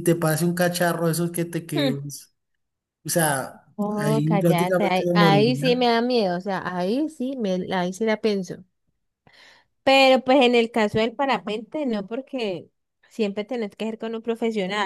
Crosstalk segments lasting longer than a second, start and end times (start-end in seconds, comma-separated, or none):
3.8-5.9